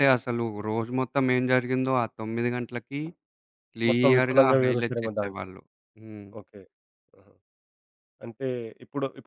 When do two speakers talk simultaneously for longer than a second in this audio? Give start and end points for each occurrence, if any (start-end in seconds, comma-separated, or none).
3.9-5.5